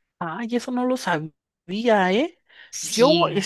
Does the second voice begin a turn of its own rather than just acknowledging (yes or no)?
no